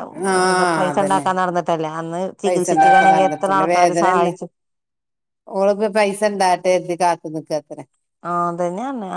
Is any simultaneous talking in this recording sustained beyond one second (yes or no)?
yes